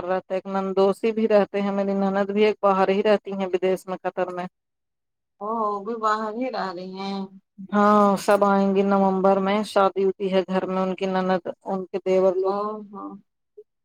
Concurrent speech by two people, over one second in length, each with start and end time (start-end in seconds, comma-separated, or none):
none